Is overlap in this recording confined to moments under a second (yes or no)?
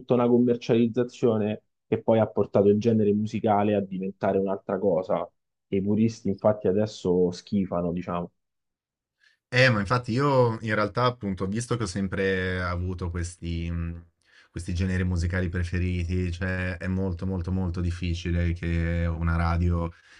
yes